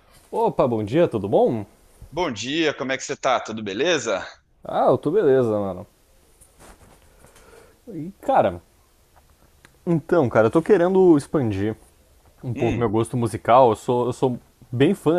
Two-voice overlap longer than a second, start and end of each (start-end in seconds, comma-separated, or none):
none